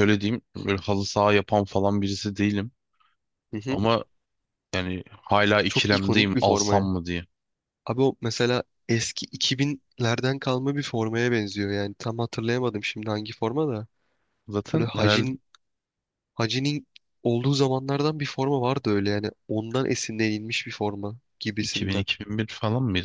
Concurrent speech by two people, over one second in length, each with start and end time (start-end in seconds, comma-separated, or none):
5.7-6.9